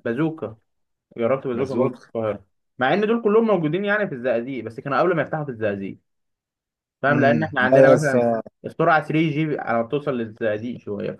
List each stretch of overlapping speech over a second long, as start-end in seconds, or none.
7.1-8.4